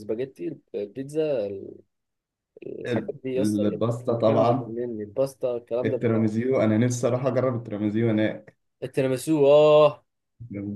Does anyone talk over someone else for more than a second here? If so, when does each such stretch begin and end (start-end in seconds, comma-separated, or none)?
2.9-4.8